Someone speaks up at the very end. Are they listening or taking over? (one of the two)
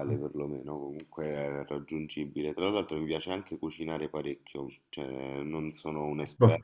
listening